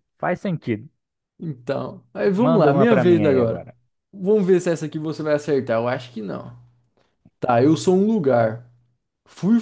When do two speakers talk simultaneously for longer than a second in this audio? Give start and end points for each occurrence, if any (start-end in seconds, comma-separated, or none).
2.4-3.7